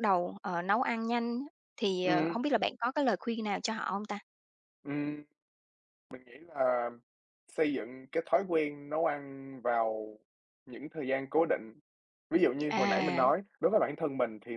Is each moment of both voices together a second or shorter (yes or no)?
yes